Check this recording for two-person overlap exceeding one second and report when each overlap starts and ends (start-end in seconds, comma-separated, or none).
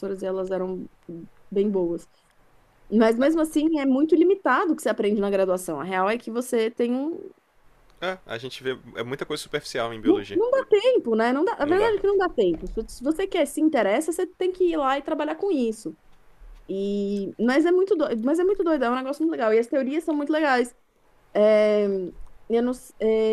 none